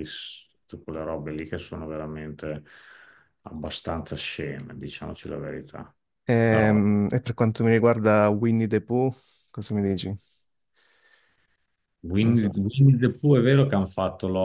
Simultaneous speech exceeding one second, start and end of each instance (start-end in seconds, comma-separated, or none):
none